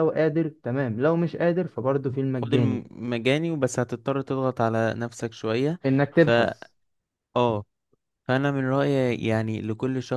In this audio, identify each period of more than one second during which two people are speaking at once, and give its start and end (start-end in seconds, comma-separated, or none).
none